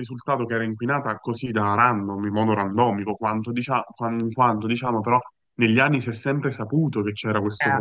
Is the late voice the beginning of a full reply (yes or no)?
no